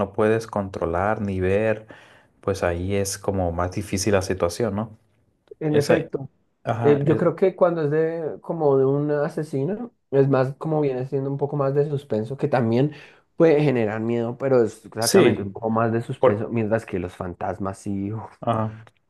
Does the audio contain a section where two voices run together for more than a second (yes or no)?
no